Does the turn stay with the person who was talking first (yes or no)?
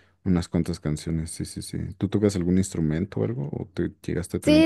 no